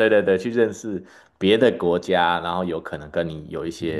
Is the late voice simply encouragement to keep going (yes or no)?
no